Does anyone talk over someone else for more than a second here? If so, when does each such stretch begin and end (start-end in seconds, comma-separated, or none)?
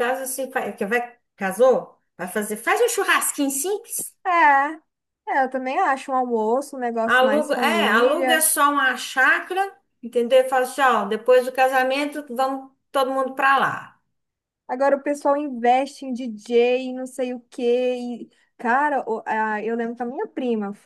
7.0-8.4